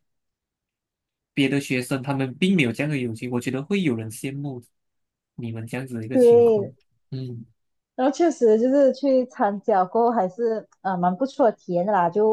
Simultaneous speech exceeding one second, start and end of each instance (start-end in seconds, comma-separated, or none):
none